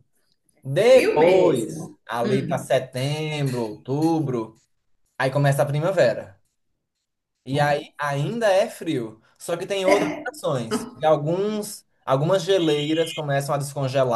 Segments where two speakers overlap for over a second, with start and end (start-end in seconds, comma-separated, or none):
0.8-2.7